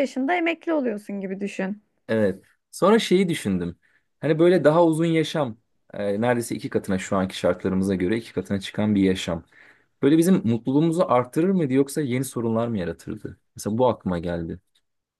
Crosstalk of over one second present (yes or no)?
no